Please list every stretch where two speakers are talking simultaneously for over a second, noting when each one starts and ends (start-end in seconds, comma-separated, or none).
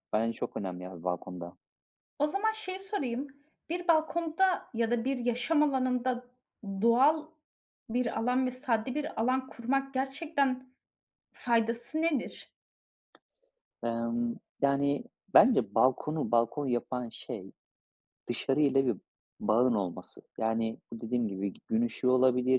none